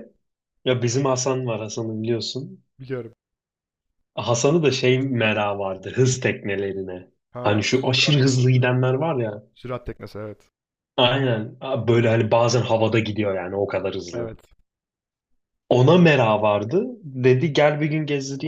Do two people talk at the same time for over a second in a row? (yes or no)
yes